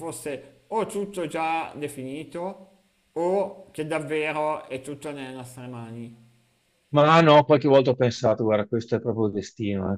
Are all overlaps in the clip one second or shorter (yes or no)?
yes